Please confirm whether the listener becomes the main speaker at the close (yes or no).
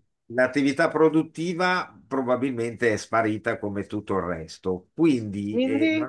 no